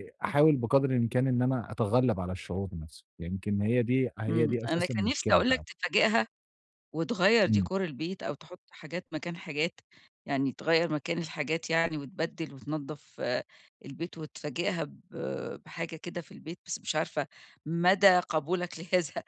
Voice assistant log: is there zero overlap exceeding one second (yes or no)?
no